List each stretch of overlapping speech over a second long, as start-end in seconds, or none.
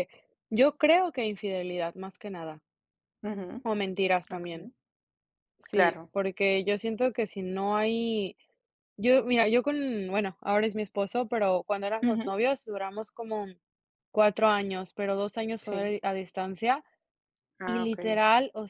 none